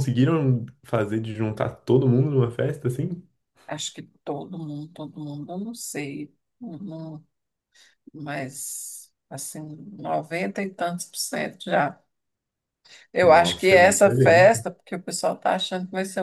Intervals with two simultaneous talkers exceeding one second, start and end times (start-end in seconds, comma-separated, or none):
13.2-14.7